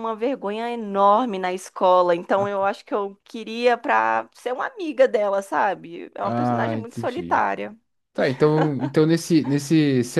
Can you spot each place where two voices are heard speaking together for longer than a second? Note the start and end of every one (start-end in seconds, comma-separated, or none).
6.2-7.4